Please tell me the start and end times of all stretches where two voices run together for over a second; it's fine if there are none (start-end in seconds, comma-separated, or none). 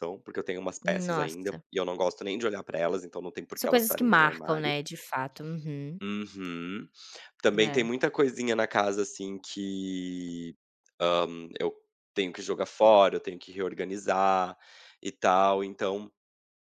3.5-4.8